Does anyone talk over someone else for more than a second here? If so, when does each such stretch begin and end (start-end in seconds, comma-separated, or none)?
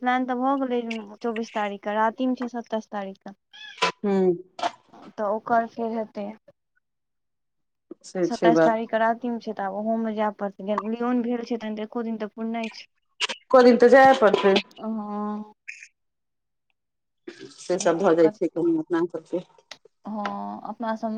none